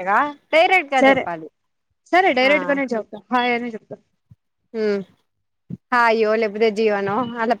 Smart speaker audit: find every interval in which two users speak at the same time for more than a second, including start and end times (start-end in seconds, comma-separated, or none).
none